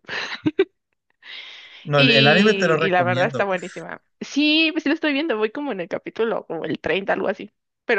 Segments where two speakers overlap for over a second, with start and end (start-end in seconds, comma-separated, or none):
1.9-3.6